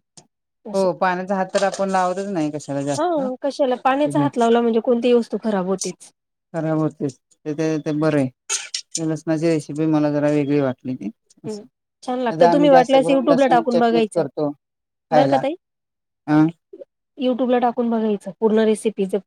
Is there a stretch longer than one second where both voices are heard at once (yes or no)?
yes